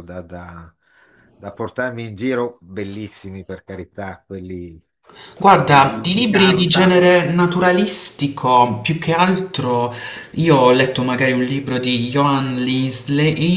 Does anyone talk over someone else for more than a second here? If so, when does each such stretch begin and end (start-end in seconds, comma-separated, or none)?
5.4-7.0